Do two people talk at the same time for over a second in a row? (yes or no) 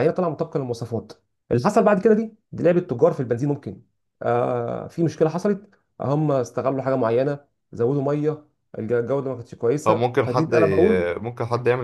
yes